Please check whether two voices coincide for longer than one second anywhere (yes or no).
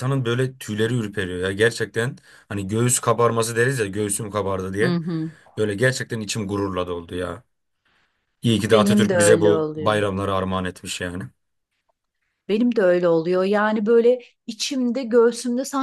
yes